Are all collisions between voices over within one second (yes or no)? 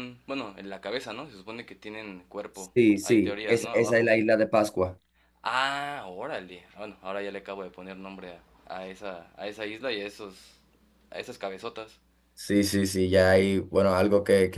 no